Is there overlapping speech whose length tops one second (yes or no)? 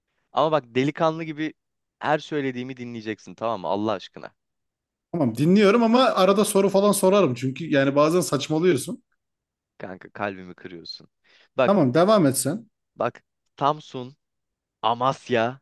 no